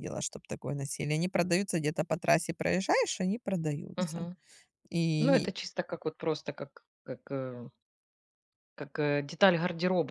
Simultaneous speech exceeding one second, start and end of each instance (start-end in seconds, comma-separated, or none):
none